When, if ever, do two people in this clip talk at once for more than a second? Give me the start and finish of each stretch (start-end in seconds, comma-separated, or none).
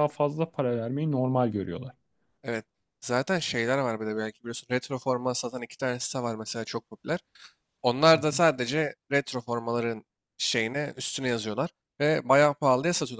none